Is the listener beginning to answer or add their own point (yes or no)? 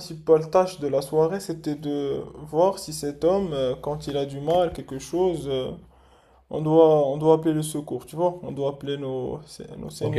yes